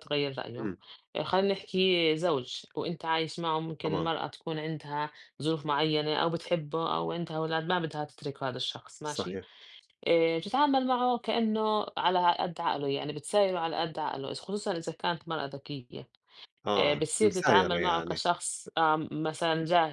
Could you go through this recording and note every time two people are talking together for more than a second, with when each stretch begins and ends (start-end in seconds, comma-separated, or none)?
16.8-18.2